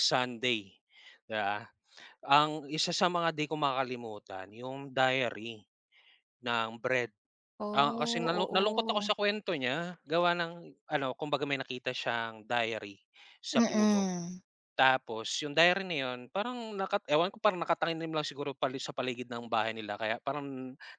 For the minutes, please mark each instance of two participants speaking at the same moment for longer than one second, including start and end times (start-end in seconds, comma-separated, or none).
7.7-9.1